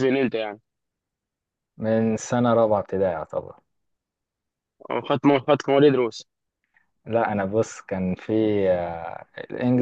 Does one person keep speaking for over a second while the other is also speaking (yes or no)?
no